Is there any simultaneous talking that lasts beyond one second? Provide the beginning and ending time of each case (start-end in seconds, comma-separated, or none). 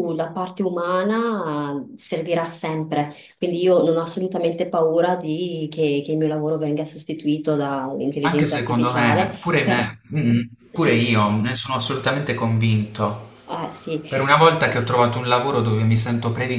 8.2-9.9